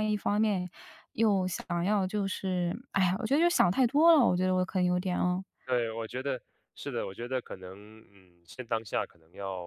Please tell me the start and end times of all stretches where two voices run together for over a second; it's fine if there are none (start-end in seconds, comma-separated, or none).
none